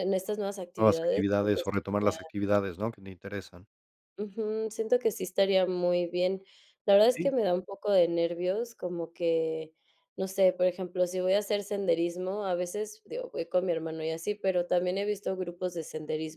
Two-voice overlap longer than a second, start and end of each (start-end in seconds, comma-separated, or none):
0.8-2.2